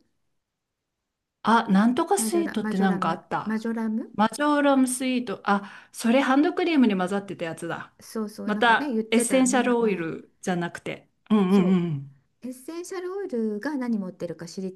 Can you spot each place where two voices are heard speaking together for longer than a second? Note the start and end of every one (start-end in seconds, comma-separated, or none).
2.2-3.6, 8.4-10.1